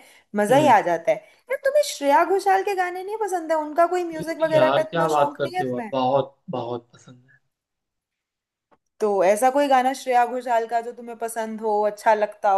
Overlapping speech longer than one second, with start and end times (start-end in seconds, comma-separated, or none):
4.1-5.9